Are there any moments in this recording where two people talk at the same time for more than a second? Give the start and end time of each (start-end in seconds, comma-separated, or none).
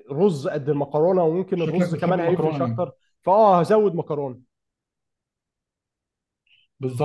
1.5-2.9